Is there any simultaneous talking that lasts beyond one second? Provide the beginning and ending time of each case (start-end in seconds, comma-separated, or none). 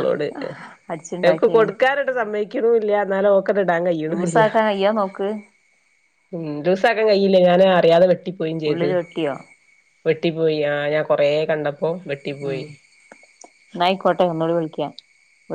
none